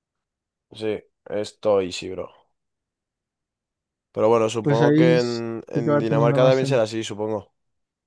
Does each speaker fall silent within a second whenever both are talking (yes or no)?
no